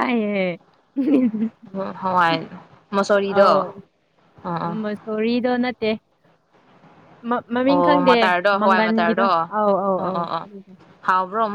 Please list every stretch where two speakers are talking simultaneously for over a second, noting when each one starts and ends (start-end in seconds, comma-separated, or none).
7.7-9.4